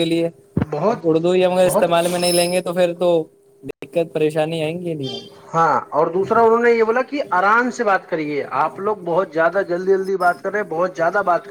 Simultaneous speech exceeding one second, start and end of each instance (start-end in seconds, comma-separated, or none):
none